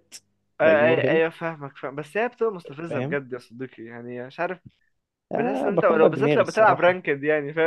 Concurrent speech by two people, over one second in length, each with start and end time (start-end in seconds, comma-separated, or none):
5.3-7.0